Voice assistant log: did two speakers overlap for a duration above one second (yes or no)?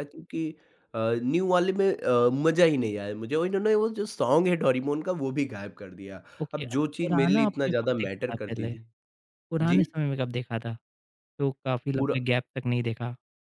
yes